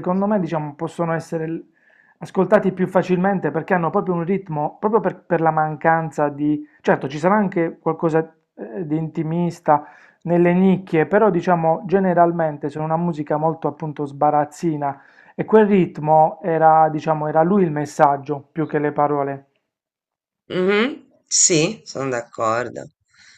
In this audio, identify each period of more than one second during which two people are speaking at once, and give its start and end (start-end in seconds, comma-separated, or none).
none